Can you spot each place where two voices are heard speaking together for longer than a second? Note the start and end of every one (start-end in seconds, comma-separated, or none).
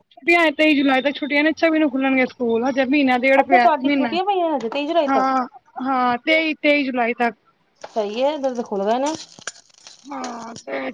3.4-5.3